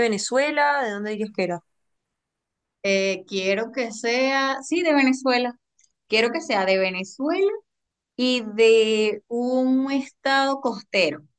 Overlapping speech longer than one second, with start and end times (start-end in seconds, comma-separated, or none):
none